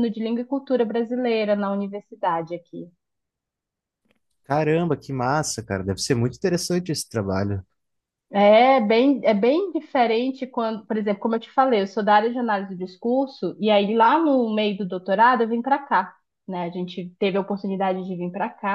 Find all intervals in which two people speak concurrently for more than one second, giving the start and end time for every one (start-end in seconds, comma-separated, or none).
none